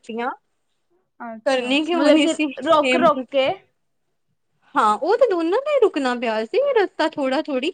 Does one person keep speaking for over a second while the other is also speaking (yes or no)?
yes